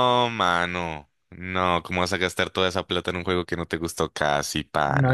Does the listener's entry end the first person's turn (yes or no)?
yes